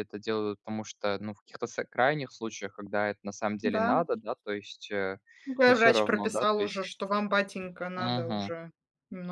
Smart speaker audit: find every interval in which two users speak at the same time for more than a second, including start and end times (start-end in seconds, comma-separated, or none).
5.7-6.9